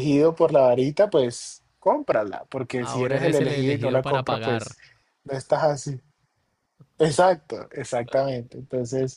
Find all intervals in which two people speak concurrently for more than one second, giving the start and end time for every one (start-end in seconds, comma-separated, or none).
2.8-4.8